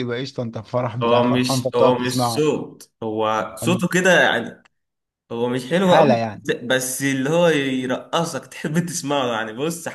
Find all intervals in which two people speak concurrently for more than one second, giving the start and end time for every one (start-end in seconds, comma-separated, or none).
1.0-2.5